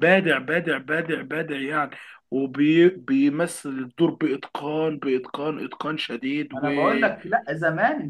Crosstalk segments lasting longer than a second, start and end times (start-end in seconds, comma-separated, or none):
none